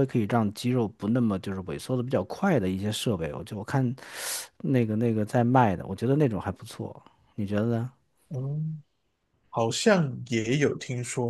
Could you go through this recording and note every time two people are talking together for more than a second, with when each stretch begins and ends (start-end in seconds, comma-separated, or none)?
none